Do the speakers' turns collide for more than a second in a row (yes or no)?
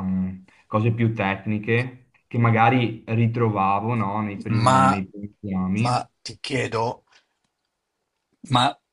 no